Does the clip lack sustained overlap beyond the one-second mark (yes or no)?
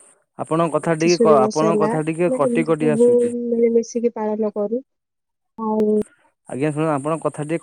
no